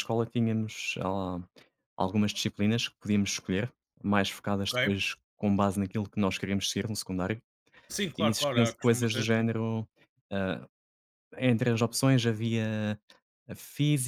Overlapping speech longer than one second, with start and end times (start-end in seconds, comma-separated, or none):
8.2-9.5